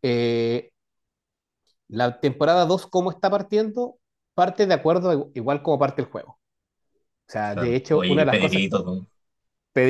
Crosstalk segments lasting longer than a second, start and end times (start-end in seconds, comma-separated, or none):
7.4-8.6